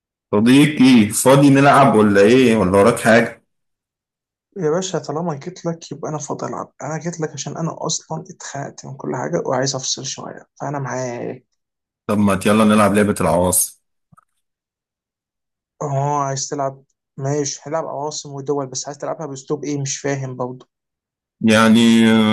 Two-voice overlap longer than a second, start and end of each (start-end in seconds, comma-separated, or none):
none